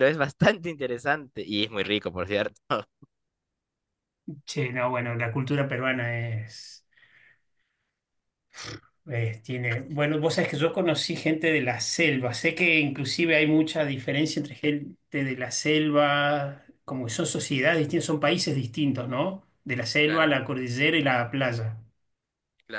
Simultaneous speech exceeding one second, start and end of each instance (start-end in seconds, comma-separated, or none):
none